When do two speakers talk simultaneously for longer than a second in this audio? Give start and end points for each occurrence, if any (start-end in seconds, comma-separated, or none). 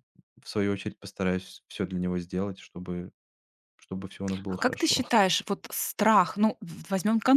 none